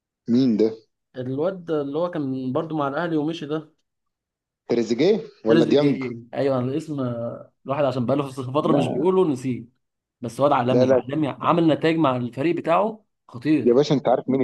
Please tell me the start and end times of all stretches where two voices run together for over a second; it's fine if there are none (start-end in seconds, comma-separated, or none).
none